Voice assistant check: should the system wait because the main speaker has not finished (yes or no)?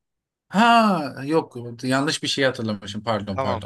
no